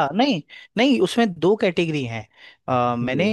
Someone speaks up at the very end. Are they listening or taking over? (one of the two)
listening